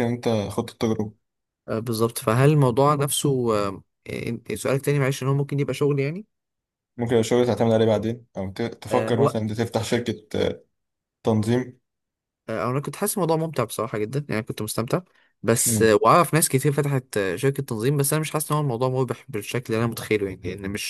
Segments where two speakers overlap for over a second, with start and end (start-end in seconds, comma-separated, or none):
none